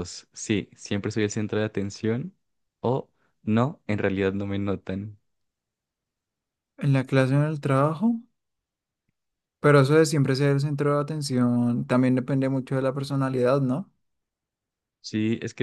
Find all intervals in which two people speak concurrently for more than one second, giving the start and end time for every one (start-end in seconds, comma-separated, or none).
none